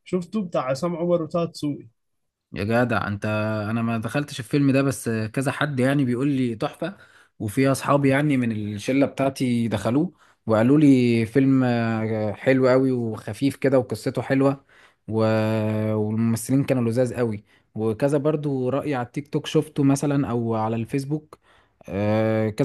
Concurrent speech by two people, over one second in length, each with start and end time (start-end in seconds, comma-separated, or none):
none